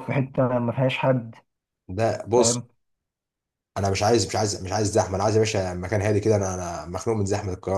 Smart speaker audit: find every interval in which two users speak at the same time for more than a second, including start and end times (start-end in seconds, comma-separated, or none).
none